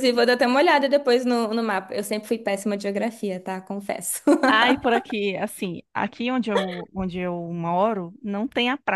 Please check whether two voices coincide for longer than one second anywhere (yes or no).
no